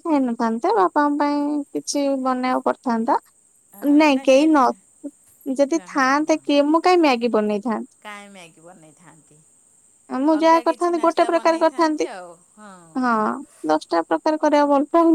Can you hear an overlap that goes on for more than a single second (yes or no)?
yes